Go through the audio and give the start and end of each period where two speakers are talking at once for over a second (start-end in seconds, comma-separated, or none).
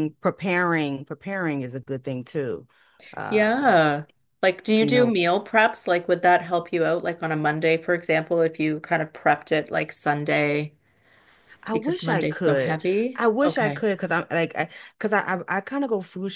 11.7-13.8